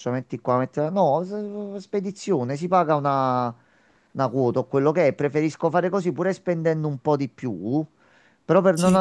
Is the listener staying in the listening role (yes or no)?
yes